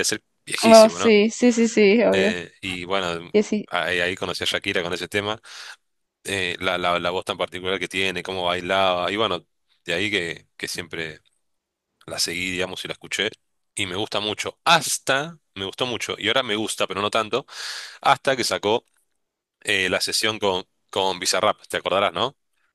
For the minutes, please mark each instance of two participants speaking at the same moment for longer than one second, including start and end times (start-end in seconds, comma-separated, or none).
none